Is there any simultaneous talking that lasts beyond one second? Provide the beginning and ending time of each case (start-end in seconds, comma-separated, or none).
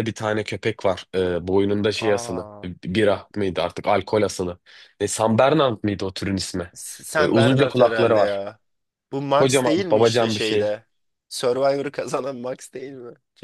7.2-8.4, 9.4-10.8